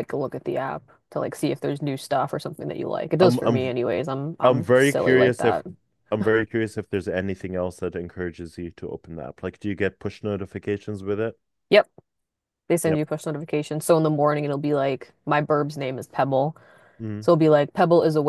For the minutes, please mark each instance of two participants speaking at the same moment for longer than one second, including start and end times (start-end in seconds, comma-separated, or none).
4.4-5.6